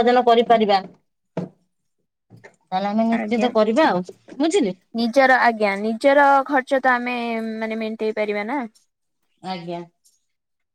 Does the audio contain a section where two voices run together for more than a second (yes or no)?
no